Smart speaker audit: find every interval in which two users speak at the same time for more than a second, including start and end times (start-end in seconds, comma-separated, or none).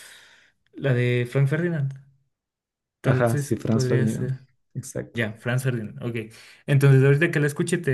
3.0-4.3